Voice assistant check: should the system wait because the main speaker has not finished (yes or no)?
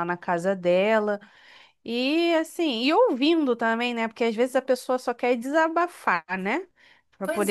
yes